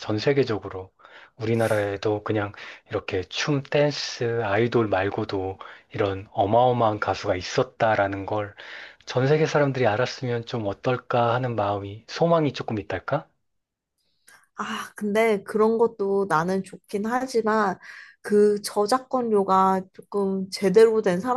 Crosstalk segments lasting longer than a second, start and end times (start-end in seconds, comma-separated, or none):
none